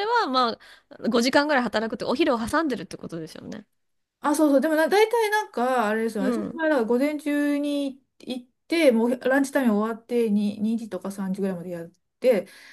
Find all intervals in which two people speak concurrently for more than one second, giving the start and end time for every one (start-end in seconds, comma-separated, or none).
none